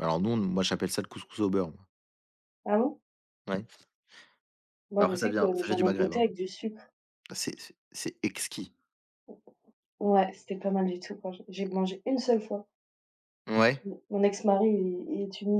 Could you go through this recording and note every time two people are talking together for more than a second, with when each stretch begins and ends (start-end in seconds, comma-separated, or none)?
5.0-6.3